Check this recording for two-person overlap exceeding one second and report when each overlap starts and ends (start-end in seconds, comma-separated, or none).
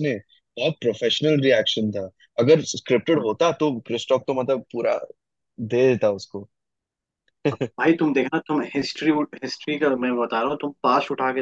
none